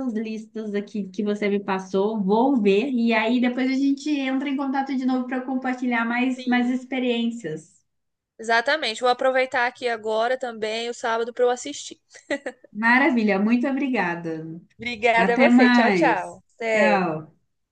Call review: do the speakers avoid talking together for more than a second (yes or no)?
no